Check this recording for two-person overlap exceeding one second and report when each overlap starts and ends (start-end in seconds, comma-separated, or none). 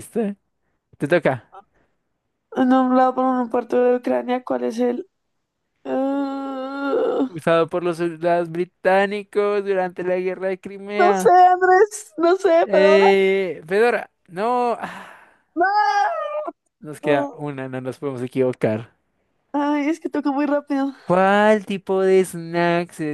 none